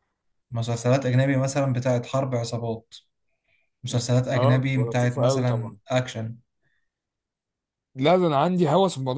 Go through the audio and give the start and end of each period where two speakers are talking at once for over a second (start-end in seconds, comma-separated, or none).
4.3-5.8